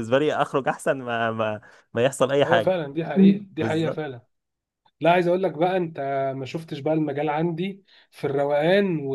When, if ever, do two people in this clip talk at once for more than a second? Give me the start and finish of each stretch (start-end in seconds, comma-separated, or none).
none